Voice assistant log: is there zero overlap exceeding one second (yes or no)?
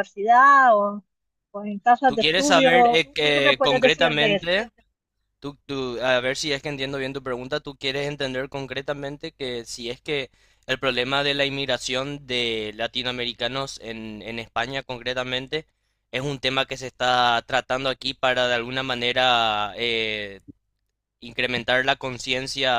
no